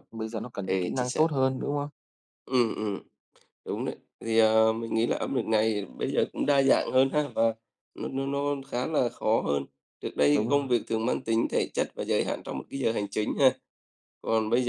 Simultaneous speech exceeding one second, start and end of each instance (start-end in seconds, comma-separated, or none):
none